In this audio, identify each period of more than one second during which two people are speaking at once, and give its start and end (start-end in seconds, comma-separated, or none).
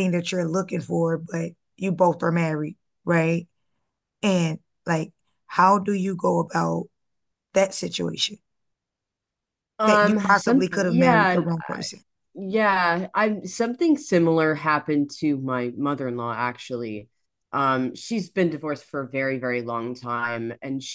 9.8-11.4